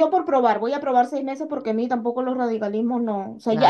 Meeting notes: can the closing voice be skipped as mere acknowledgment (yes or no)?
yes